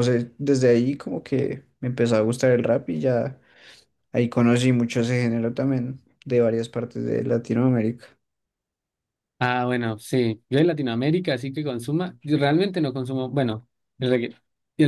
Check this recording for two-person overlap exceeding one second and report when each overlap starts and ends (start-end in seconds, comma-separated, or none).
none